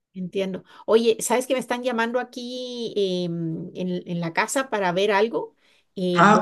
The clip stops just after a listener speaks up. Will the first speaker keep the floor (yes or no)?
yes